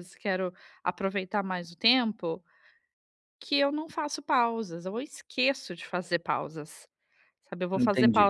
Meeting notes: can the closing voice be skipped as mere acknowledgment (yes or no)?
yes